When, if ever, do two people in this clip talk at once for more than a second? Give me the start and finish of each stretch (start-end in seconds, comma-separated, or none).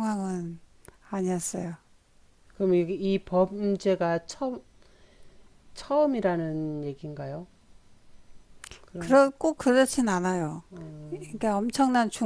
none